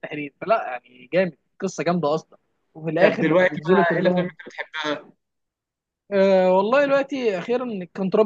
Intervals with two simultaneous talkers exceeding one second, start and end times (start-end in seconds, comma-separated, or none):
3.0-4.3